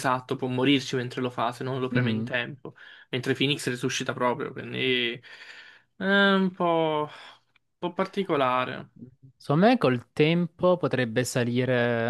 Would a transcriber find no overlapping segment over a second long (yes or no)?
yes